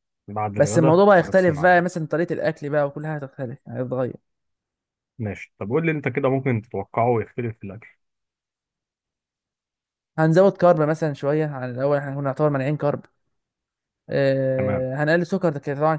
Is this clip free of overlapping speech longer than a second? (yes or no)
no